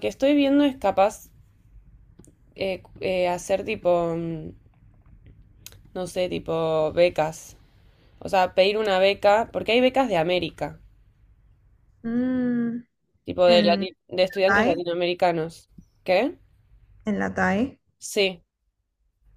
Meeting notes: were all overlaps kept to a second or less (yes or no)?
no